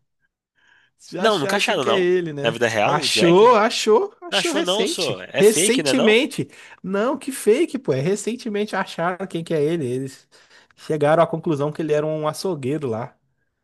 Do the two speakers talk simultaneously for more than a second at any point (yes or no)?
yes